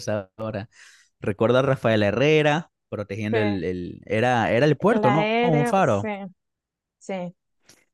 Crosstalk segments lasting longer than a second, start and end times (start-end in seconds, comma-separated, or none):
4.9-6.1